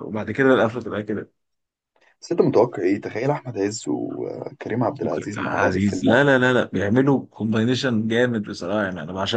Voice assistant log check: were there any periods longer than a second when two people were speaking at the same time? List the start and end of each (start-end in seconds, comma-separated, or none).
5.0-6.2